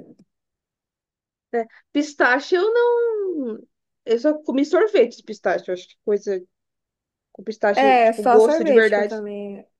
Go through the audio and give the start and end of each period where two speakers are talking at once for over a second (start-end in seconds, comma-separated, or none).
7.8-9.1